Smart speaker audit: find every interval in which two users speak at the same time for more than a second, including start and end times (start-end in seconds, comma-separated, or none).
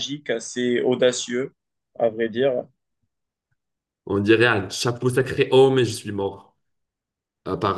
none